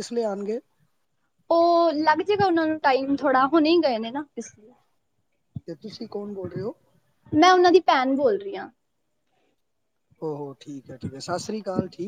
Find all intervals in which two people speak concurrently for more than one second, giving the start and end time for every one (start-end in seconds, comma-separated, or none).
none